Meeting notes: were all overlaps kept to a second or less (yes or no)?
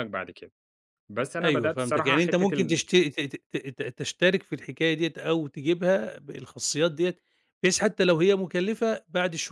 no